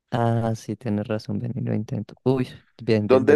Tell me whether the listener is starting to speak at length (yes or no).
yes